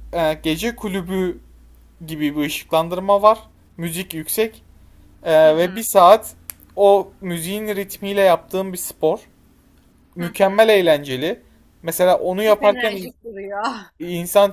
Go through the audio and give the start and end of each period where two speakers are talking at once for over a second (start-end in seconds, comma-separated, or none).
none